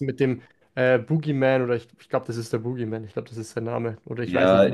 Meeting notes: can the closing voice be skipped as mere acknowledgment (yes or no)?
no